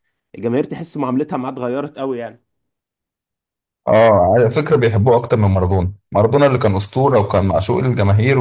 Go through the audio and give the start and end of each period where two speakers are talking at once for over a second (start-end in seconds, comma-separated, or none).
none